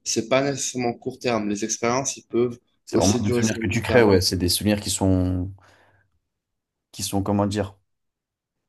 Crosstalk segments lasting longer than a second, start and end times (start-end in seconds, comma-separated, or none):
2.9-4.1